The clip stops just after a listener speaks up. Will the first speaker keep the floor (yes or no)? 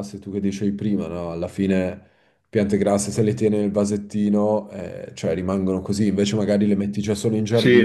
no